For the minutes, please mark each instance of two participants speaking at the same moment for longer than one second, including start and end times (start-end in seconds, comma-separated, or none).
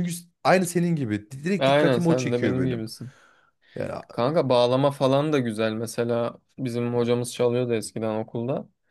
1.6-2.9